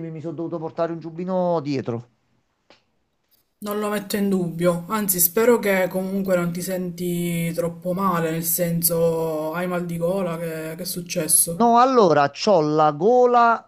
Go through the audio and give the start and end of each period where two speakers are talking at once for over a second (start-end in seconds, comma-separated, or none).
none